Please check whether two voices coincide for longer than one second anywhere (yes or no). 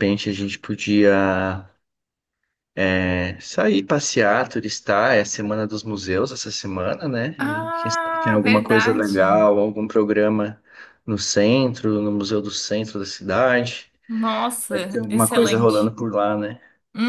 yes